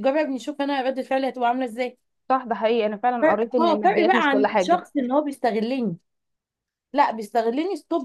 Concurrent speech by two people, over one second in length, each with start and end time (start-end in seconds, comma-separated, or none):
3.2-4.8